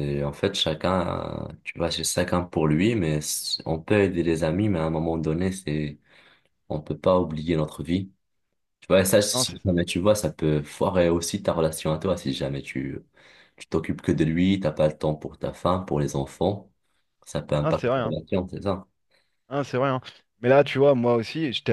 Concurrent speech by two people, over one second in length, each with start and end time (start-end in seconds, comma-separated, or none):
none